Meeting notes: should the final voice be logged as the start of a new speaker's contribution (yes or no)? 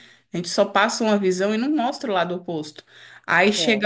no